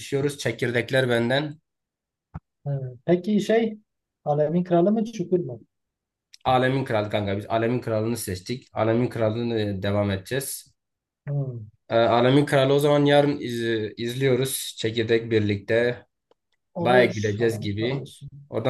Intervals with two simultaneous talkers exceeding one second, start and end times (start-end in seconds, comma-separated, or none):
16.8-18.0